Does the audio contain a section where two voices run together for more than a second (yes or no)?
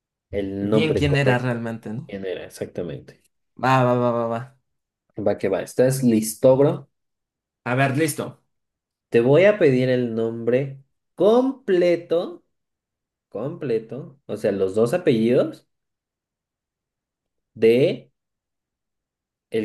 yes